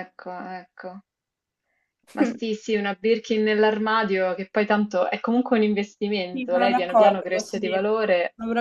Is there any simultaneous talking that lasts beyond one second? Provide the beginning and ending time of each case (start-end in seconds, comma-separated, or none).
6.3-7.9